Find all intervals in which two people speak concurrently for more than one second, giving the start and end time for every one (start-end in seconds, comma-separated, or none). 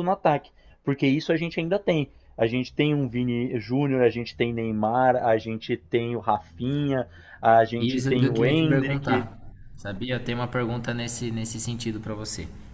7.8-9.3